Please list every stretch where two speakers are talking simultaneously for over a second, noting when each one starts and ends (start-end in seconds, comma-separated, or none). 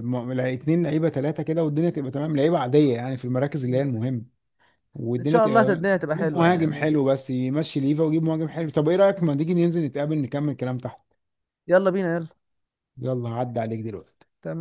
5.2-6.9